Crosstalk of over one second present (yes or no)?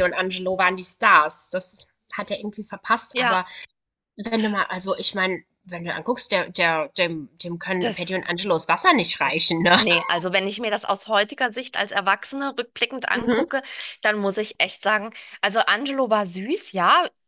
no